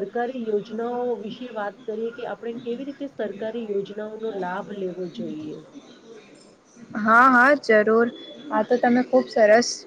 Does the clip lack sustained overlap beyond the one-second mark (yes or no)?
yes